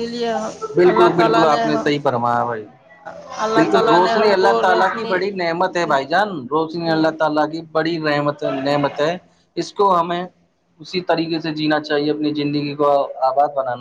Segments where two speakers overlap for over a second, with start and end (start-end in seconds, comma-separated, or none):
3.5-5.2